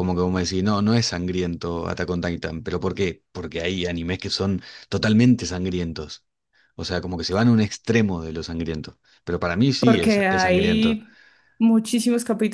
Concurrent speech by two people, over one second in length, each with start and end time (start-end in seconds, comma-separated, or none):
9.8-11.0